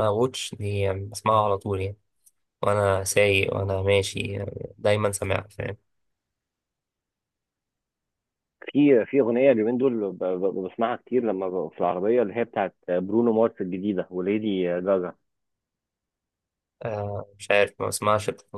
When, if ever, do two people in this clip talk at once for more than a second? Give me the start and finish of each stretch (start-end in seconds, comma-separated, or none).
none